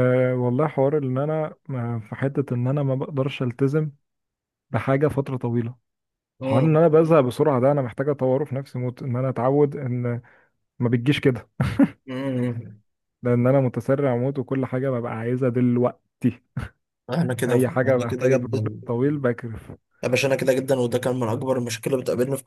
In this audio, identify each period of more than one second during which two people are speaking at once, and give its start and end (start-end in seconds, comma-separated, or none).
17.5-18.8